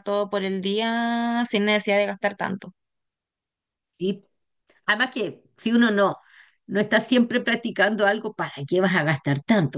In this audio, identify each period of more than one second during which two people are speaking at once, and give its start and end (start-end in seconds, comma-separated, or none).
none